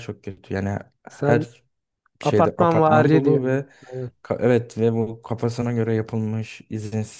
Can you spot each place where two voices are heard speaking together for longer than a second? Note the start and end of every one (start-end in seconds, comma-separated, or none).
2.2-3.7